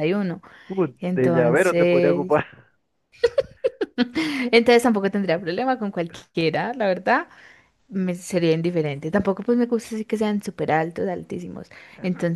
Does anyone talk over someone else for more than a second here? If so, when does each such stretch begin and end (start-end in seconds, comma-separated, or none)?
1.0-2.4